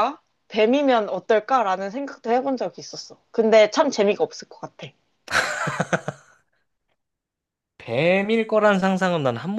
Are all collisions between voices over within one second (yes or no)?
yes